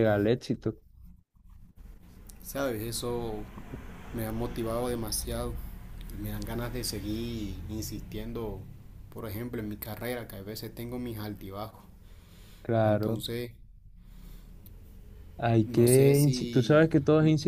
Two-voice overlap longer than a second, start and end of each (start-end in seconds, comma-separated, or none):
15.7-16.9